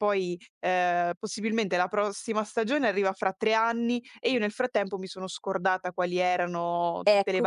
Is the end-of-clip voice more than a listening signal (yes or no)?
yes